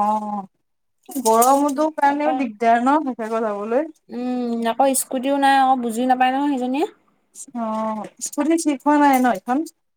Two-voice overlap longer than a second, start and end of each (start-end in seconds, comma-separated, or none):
none